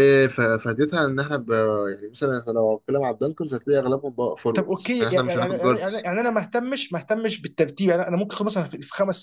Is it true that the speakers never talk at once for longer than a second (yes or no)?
no